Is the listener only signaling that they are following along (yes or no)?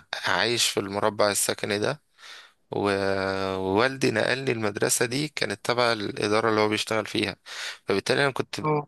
yes